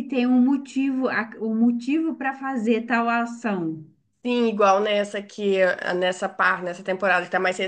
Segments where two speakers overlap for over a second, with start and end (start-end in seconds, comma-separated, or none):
none